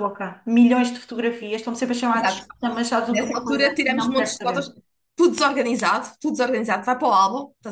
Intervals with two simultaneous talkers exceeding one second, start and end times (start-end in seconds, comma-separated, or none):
3.1-4.7